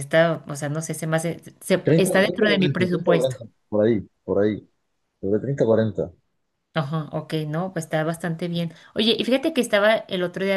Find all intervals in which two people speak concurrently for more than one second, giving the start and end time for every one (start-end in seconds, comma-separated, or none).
1.8-3.4